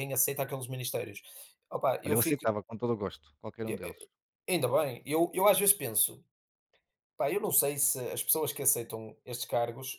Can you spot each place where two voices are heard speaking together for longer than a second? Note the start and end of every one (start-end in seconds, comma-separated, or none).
none